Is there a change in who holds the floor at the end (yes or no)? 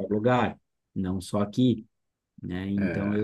no